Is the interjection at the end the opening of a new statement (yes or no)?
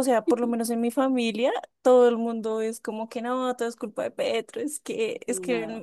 no